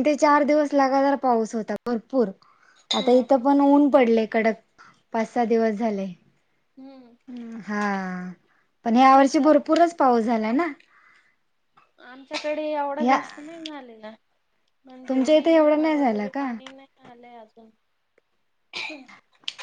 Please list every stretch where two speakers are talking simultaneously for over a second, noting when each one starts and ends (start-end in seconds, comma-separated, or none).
15.1-16.5